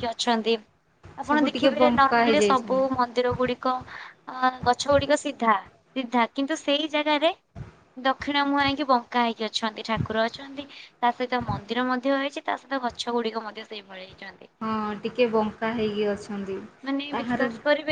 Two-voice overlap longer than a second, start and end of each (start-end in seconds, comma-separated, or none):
1.3-2.8